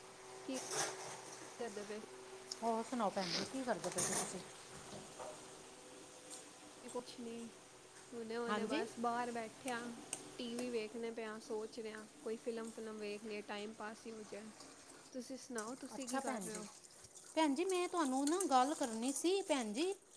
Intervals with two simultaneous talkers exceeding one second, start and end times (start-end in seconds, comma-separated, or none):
none